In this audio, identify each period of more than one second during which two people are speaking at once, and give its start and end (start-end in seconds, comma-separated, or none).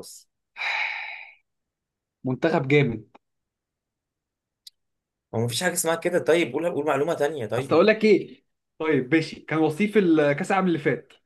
none